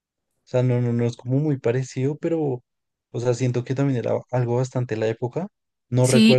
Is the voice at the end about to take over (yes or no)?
no